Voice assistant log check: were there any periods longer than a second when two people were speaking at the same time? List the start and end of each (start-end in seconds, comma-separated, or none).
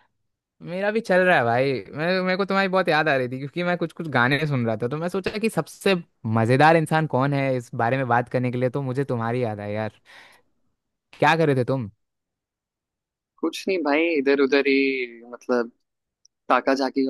none